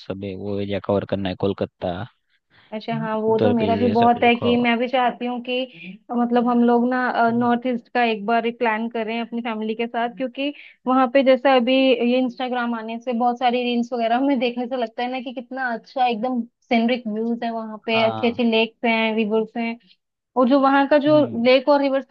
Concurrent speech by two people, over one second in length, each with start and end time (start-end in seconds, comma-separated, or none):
2.7-4.5